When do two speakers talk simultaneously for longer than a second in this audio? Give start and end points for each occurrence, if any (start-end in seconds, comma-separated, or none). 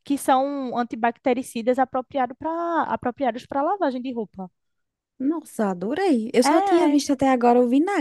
none